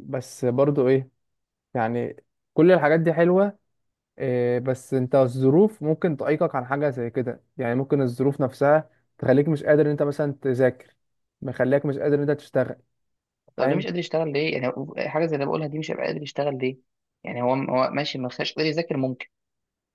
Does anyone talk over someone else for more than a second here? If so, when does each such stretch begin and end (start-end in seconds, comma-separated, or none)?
none